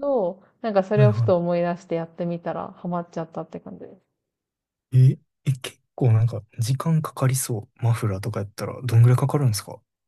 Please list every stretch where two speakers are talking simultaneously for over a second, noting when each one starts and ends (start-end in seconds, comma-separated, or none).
none